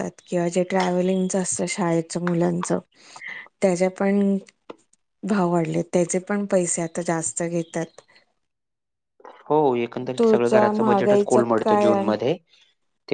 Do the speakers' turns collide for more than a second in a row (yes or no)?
yes